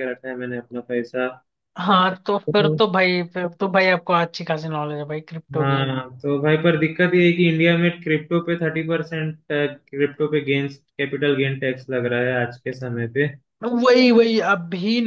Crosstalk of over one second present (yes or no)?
no